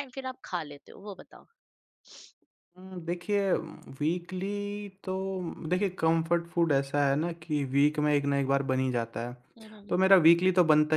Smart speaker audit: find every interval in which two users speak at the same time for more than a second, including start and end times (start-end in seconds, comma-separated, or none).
none